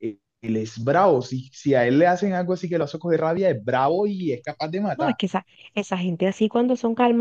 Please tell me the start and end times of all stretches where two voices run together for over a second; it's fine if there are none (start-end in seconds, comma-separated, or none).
none